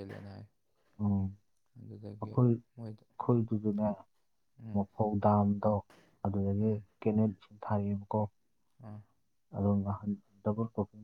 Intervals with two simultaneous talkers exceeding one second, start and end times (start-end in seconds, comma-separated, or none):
none